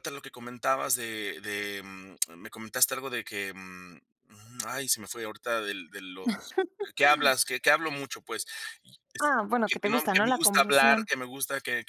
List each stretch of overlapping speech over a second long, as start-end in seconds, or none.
9.2-11.1